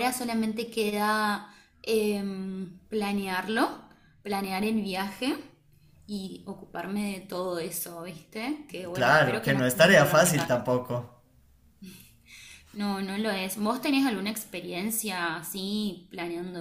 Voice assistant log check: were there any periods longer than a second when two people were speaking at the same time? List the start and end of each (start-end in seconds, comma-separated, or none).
8.9-10.7